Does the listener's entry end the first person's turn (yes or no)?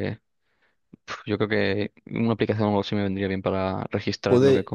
yes